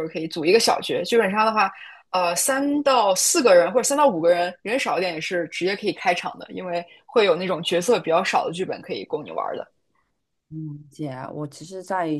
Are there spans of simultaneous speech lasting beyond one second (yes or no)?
no